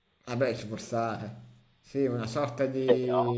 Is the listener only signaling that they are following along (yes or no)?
yes